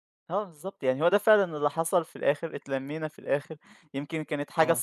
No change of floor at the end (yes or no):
yes